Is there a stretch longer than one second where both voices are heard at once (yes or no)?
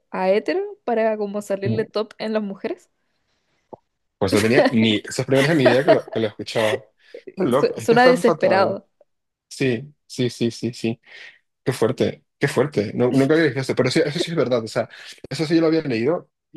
yes